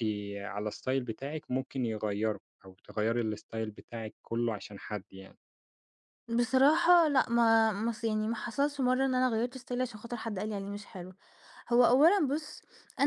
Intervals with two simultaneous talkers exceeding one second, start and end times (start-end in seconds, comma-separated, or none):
none